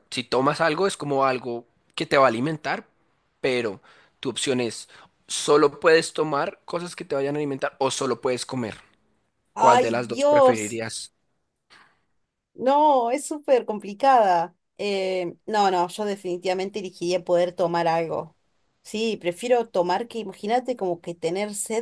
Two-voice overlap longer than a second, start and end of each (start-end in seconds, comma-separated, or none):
9.6-10.8